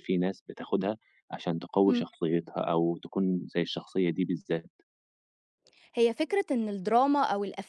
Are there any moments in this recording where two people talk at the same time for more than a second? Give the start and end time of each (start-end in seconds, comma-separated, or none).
none